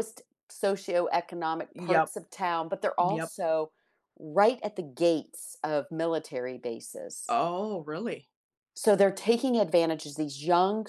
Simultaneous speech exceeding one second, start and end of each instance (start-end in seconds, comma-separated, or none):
none